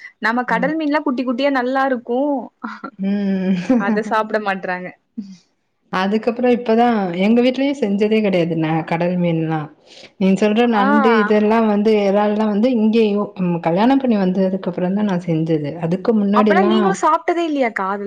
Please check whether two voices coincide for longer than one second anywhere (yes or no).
no